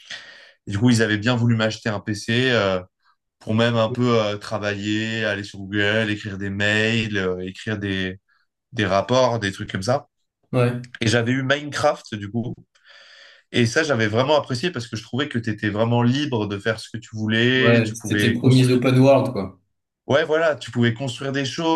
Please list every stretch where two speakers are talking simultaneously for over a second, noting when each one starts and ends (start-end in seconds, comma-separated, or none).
17.6-18.8